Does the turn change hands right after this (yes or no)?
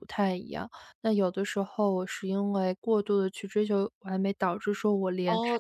yes